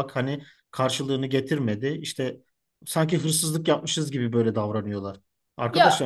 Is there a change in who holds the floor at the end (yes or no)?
no